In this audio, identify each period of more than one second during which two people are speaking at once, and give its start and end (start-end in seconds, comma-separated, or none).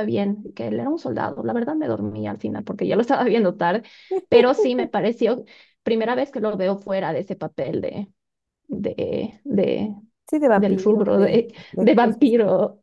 10.6-12.3